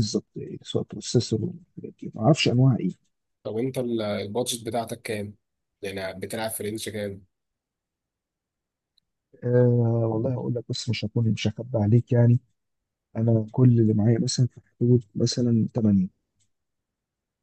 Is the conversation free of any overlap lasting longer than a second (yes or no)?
yes